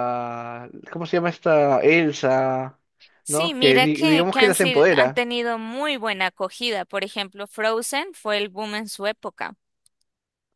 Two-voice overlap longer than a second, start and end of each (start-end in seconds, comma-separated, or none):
3.3-5.2